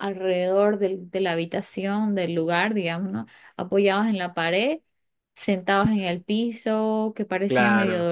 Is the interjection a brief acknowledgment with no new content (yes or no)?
yes